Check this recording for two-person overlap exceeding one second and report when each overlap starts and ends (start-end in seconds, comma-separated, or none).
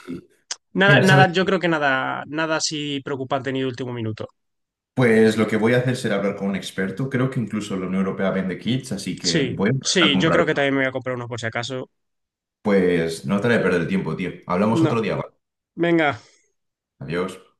9.2-10.6